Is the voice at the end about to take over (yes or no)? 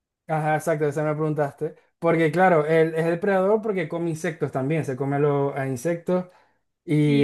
yes